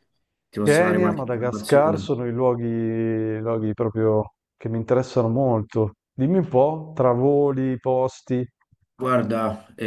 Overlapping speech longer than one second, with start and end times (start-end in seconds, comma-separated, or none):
0.6-2.1